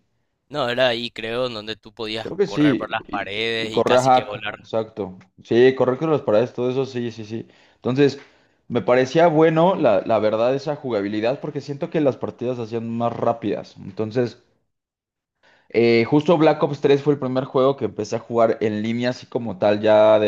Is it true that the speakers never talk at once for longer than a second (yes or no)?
no